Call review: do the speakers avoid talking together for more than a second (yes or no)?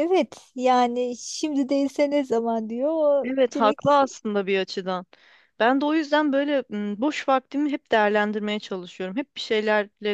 yes